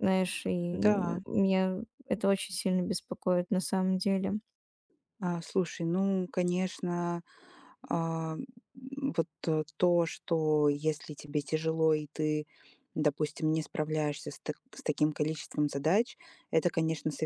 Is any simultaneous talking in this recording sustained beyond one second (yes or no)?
no